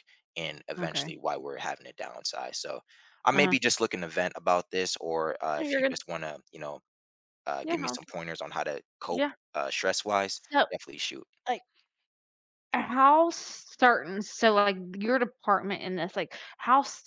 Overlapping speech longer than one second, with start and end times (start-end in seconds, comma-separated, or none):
none